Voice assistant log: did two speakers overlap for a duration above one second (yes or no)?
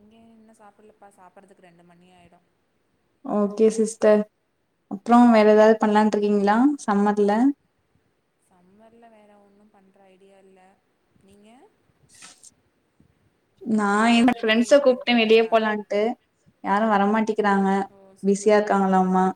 yes